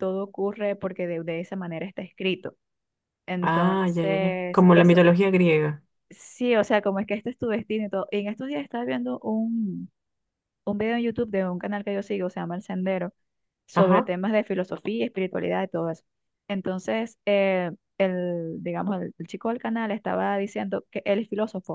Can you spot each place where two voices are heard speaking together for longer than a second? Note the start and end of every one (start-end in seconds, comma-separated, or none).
3.4-5.0